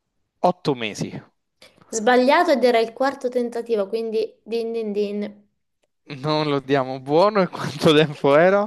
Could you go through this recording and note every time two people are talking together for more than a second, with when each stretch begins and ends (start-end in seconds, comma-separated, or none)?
none